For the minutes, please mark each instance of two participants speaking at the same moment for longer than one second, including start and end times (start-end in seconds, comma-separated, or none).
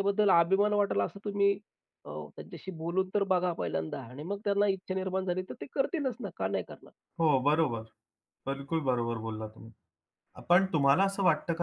none